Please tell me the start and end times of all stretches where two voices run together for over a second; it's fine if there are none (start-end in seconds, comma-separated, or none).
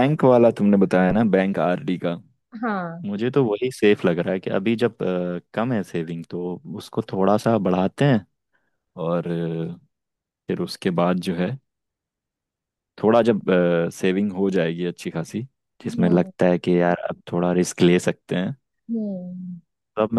none